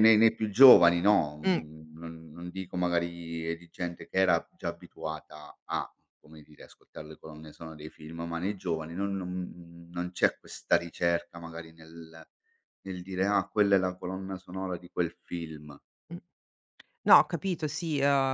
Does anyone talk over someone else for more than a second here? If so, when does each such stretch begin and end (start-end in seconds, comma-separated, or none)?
none